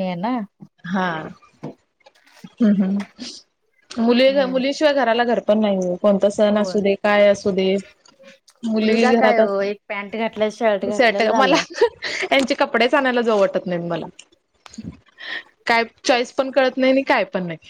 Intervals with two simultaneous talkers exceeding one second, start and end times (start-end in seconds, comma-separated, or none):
8.8-11.6